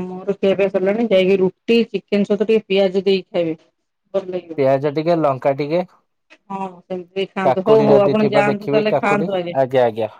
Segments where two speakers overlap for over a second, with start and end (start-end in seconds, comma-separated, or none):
7.5-9.3